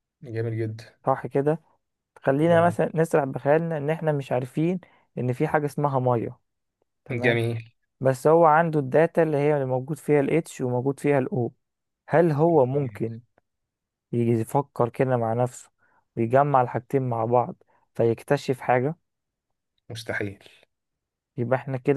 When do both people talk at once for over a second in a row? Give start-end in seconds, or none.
none